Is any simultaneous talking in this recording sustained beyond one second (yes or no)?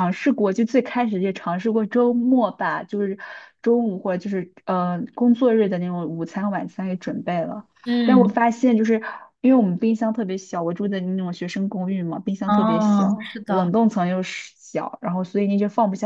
yes